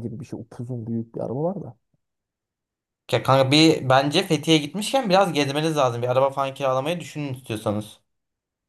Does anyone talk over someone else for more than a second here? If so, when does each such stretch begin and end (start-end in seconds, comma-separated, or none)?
none